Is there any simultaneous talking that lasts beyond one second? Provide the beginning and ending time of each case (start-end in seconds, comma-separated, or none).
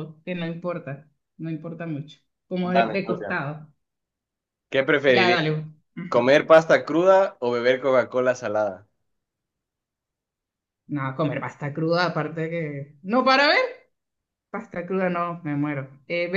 none